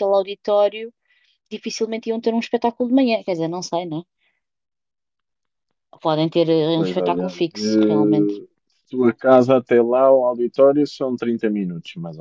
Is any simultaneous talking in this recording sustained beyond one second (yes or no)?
yes